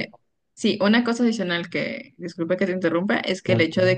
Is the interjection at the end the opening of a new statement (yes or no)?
no